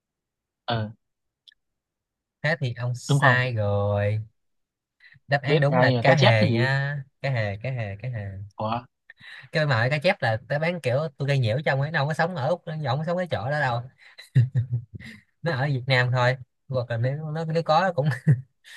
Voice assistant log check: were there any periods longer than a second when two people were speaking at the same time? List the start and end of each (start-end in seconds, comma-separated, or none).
5.5-6.7